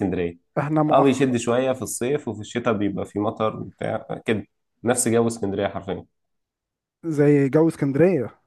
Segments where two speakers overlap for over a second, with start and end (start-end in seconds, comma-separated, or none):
none